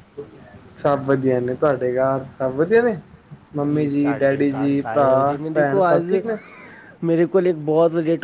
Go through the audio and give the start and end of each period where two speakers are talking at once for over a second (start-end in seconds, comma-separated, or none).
3.7-6.1